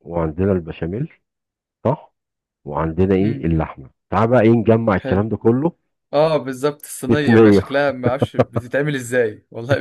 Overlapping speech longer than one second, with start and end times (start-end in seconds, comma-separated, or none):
none